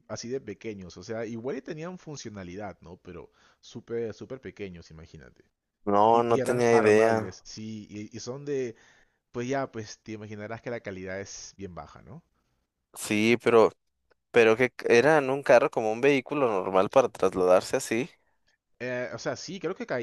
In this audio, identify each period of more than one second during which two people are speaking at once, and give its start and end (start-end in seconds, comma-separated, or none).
6.1-7.4